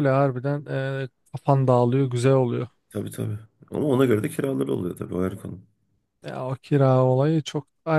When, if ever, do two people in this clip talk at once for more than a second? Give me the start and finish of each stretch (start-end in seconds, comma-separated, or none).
none